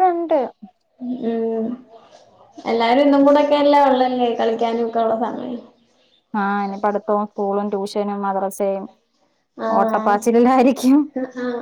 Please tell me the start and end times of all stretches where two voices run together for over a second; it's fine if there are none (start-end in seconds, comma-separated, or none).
none